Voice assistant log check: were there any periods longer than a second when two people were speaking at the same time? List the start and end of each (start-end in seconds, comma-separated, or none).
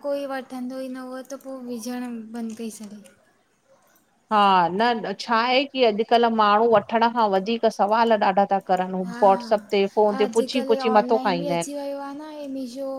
10.1-11.7